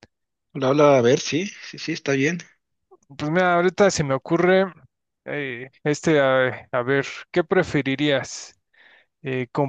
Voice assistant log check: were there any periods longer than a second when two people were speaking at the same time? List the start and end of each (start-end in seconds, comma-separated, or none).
none